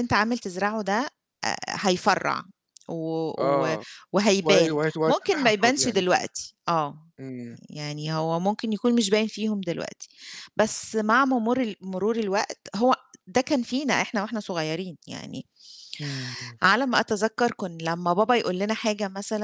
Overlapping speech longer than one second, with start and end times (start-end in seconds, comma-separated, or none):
4.4-6.0